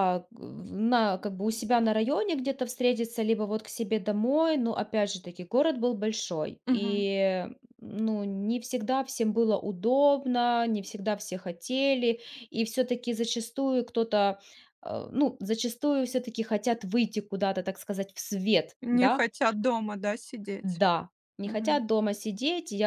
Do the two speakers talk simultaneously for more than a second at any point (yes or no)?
no